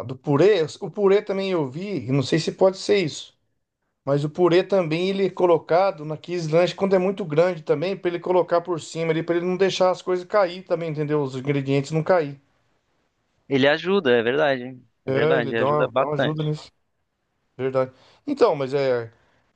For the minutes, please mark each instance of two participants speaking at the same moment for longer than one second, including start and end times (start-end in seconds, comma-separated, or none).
15.1-16.4